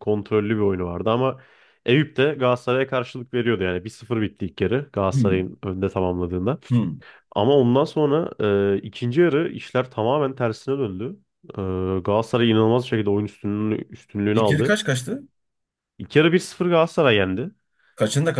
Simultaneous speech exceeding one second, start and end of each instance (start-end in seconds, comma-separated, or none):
none